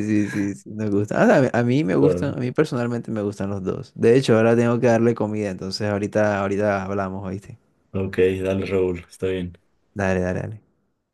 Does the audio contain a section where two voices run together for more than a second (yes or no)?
no